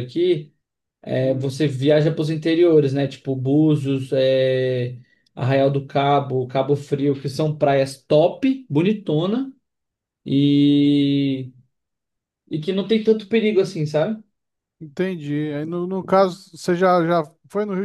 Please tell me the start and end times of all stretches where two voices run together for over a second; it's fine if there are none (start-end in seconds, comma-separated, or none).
none